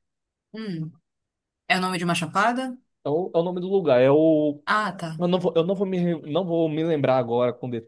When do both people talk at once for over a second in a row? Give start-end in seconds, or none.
none